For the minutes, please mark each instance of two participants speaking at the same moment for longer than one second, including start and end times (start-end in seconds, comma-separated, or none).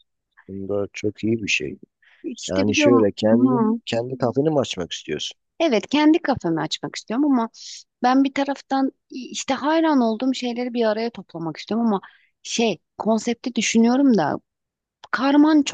2.5-3.8